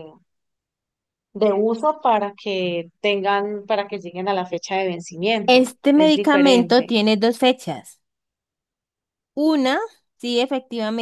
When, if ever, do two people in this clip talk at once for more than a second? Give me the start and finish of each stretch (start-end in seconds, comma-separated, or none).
5.4-6.9